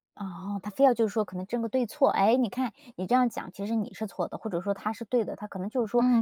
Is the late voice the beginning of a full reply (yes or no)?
yes